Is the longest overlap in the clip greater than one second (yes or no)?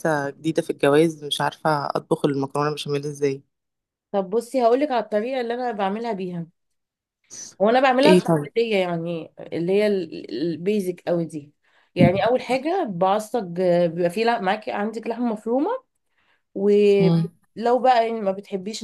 no